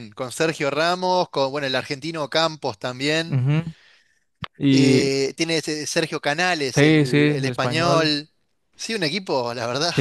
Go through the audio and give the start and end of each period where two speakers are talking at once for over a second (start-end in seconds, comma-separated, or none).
6.7-8.2